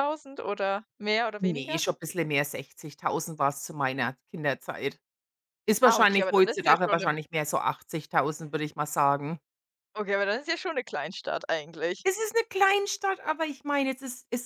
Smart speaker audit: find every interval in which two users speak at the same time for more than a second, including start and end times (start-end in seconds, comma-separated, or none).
5.8-7.1